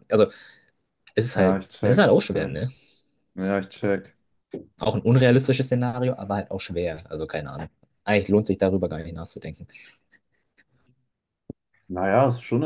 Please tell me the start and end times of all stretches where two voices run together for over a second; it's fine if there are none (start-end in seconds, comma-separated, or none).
1.4-2.6